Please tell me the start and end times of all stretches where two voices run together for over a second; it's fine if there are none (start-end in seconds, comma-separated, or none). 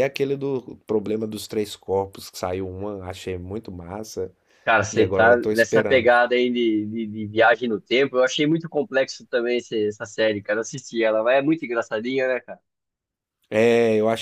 4.9-6.1